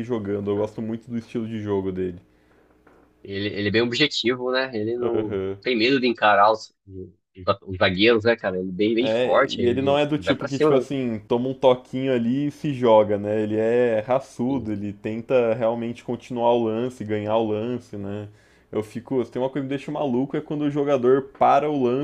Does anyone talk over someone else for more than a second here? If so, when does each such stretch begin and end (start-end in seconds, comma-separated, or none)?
9.0-10.9